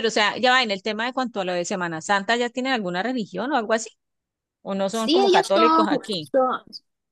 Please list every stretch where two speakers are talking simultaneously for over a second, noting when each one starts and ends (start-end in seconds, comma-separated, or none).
4.9-6.3